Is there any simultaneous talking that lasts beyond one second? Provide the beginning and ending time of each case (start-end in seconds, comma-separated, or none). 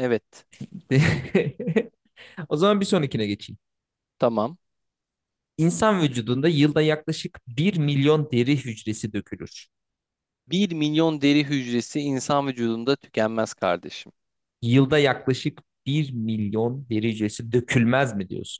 none